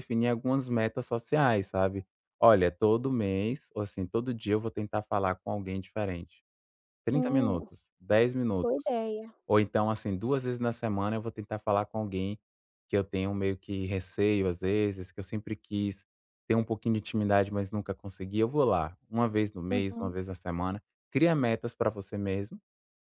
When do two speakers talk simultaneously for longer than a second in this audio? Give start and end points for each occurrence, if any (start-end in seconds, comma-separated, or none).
none